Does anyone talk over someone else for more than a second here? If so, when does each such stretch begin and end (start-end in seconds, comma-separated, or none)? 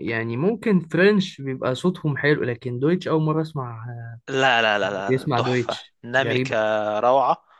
5.1-6.6